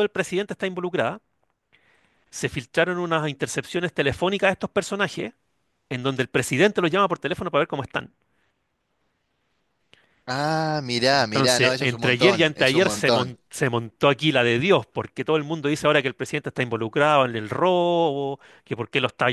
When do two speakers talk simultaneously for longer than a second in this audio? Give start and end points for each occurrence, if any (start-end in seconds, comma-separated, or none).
11.1-13.3